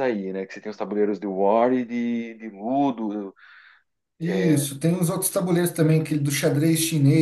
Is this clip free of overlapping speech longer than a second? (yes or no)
yes